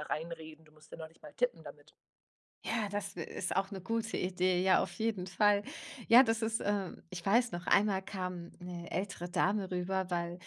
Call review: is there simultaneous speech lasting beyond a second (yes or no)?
no